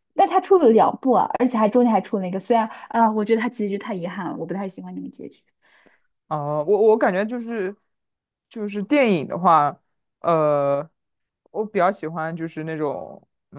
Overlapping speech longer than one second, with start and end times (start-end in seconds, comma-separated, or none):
none